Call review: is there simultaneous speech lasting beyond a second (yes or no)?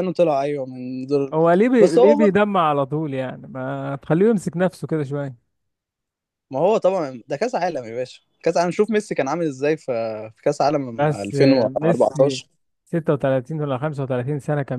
yes